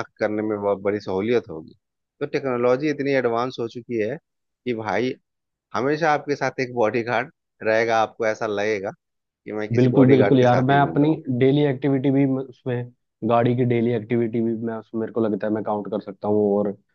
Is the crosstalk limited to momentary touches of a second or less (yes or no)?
no